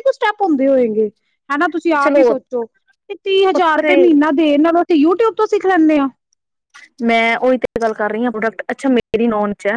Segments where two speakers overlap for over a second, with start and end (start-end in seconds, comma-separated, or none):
none